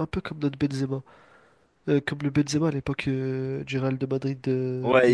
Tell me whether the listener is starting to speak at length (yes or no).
yes